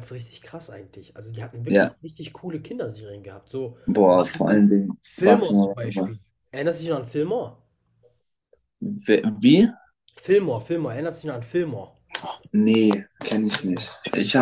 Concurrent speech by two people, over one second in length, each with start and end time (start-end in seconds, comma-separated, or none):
3.9-6.2